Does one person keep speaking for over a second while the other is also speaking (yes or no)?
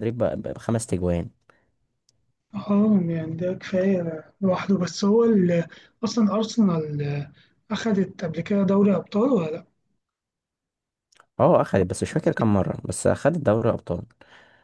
no